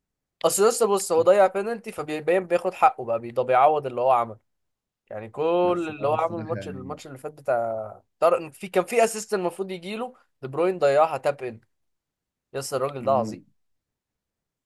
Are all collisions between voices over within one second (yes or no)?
no